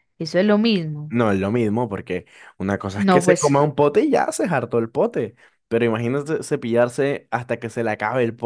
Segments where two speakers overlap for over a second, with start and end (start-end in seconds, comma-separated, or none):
none